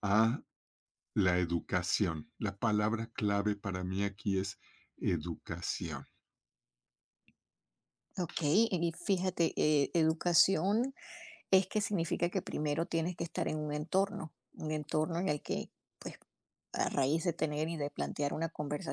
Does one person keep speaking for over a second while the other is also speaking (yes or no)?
no